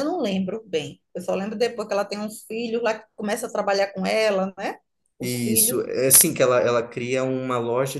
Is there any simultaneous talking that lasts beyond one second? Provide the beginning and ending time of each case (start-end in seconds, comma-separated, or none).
none